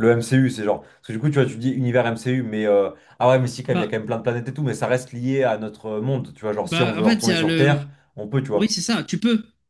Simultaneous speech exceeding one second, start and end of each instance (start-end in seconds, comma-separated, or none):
6.6-7.8